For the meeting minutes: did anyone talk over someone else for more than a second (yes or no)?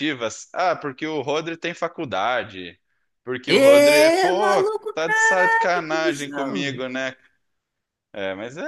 yes